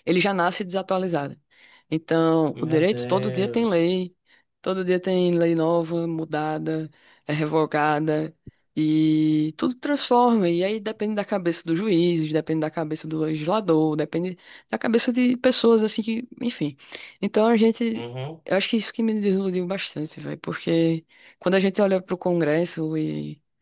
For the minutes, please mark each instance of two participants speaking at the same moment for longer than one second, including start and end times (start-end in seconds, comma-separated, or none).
2.5-3.9